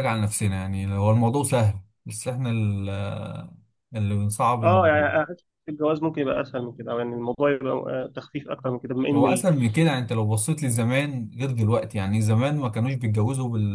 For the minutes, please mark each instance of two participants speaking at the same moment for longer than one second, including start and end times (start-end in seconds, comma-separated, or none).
none